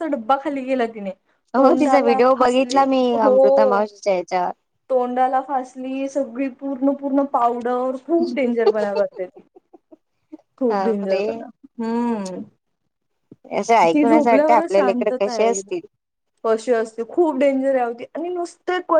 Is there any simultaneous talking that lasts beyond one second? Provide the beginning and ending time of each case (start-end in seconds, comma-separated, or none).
13.9-15.7